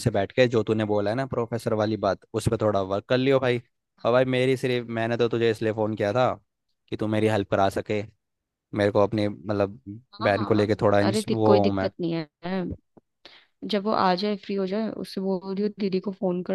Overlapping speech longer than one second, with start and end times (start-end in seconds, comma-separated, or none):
10.2-11.9